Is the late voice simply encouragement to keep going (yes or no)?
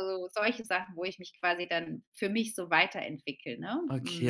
no